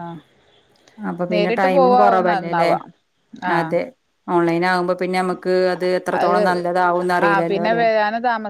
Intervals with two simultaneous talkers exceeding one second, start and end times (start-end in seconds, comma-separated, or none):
1.3-2.7